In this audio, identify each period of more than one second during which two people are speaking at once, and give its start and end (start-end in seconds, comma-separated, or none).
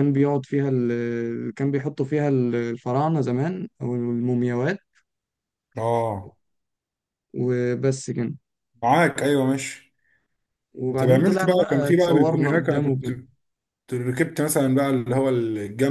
11.0-13.1